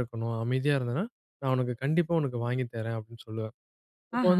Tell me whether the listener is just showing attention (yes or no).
yes